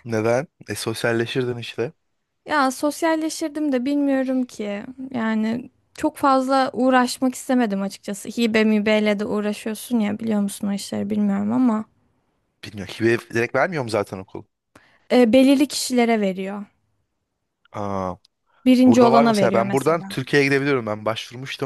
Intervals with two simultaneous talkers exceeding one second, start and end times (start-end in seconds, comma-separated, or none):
18.9-20.1